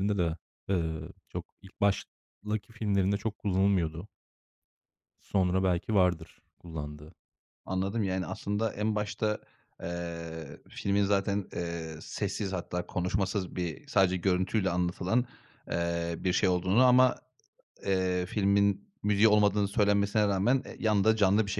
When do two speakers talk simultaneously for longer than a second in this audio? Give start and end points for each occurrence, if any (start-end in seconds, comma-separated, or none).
none